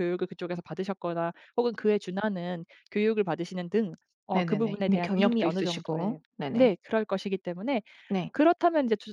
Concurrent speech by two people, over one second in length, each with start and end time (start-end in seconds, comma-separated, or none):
4.3-6.7